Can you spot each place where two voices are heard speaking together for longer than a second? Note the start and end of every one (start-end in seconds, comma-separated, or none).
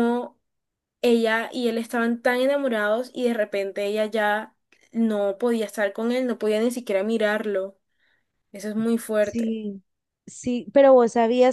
none